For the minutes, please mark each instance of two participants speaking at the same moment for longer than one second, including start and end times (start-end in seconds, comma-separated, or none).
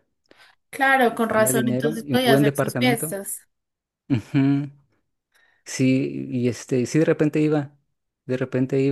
1.0-3.2